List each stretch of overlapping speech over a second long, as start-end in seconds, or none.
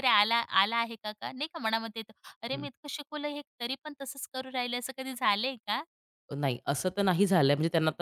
none